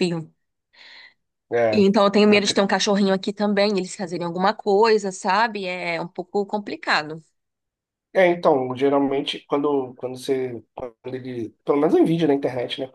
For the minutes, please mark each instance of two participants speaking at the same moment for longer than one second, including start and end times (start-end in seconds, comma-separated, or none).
none